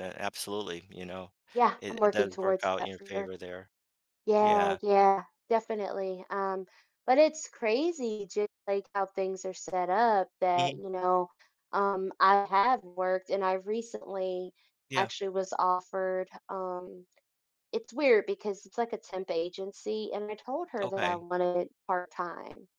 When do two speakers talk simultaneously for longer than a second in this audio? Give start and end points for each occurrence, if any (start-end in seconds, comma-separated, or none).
1.8-3.3